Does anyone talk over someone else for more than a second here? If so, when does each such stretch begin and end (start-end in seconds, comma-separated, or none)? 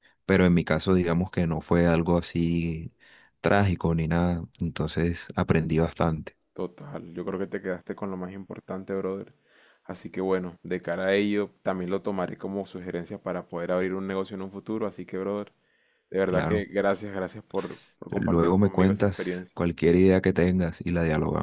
18.2-19.6